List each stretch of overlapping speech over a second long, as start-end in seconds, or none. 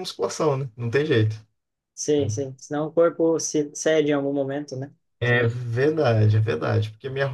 none